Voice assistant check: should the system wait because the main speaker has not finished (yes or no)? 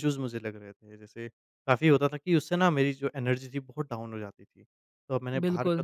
yes